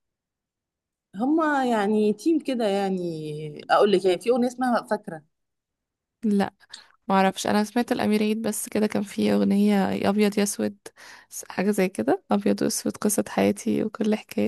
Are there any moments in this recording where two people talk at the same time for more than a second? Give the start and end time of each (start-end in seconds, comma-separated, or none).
none